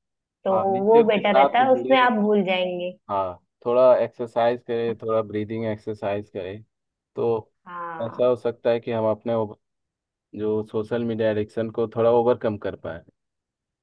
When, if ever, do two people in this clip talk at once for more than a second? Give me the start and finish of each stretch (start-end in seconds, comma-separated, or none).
0.5-2.1